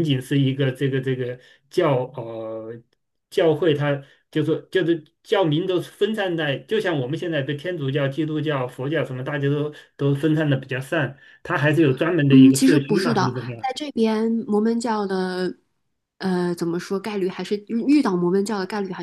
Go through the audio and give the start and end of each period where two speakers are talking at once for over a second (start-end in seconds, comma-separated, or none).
12.3-13.7